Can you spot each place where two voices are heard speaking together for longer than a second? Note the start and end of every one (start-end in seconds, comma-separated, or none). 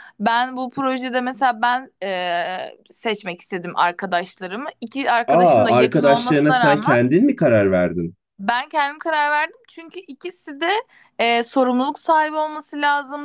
5.3-7.0